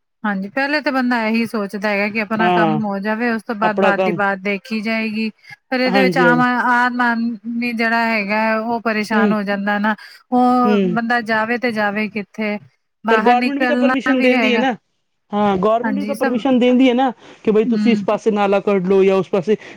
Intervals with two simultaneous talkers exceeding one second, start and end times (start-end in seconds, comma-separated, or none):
13.1-14.6